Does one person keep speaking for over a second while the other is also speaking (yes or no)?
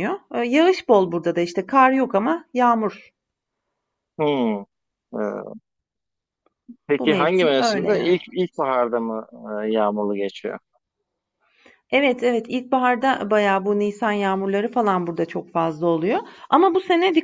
yes